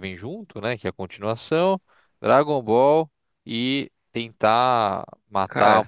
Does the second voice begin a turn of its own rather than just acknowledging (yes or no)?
no